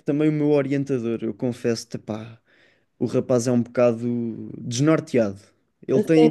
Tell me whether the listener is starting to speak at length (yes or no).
no